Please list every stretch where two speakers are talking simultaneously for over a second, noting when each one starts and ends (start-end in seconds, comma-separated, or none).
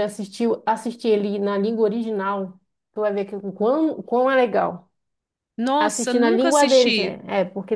5.8-7.2